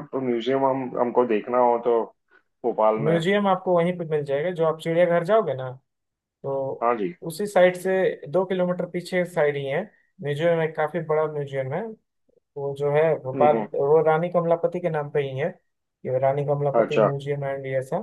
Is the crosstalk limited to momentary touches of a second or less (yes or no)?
yes